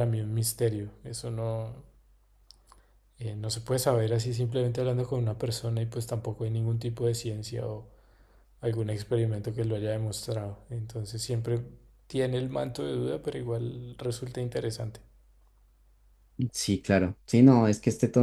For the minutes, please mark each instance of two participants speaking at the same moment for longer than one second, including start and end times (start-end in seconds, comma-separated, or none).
none